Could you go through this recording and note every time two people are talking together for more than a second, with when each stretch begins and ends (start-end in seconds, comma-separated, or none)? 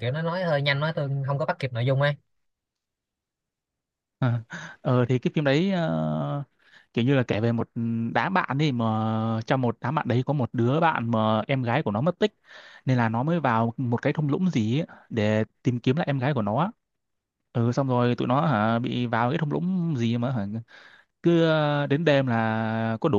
none